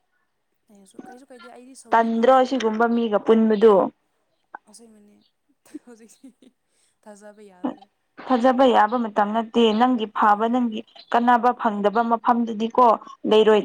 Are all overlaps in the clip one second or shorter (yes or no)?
yes